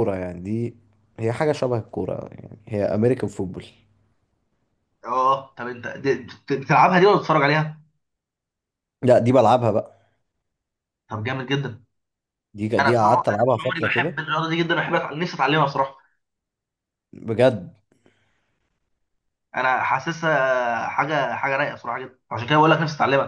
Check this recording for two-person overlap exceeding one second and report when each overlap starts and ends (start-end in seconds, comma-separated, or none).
12.8-14.2